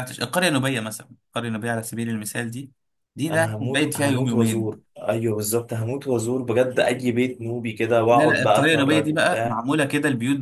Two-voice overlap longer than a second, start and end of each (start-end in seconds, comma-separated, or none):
3.3-4.9, 8.1-9.6